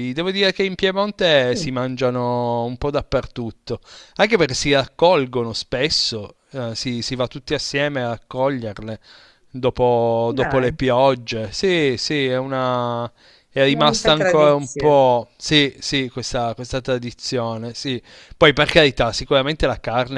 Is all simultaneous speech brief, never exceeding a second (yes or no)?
no